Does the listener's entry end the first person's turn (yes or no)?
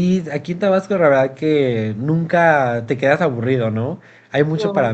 no